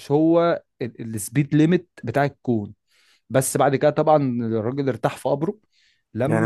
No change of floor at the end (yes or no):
no